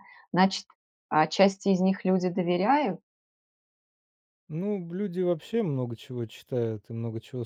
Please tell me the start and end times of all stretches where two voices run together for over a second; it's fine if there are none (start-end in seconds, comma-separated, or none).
none